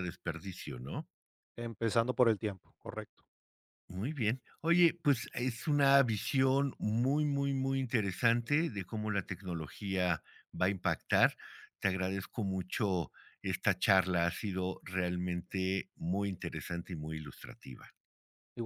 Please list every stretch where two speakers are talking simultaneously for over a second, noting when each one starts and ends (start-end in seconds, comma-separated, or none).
none